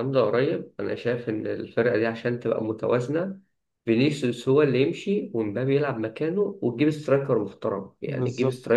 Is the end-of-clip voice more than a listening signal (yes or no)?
no